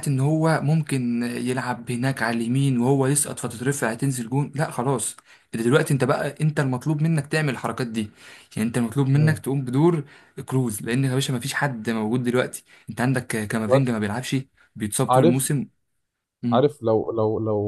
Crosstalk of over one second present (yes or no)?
no